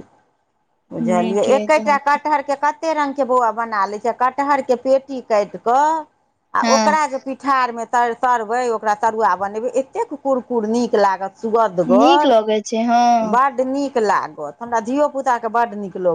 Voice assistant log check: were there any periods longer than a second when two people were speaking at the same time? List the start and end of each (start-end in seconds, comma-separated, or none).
12.0-13.3